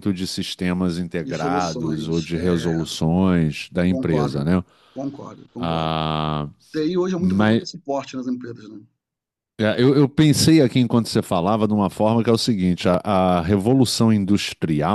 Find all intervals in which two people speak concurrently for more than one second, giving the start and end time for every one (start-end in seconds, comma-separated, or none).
1.2-2.8